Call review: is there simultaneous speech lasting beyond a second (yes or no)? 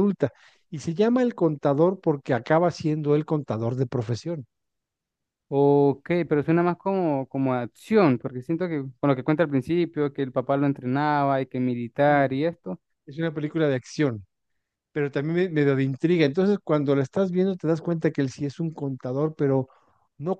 no